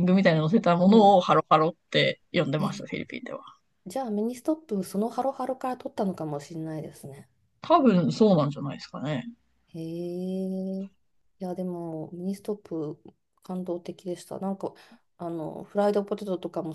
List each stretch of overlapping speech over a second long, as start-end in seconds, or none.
none